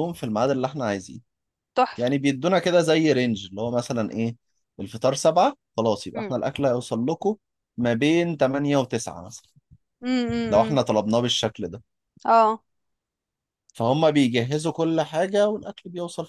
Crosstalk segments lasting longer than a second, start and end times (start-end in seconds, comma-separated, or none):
none